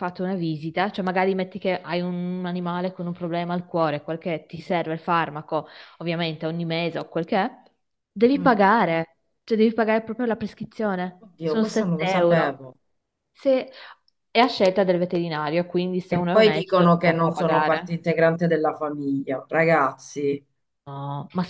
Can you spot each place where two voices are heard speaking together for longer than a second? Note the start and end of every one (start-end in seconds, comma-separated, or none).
11.2-12.6, 16.1-18.0